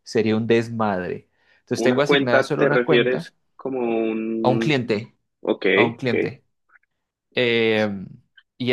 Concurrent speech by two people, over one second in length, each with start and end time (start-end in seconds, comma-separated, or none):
1.8-3.3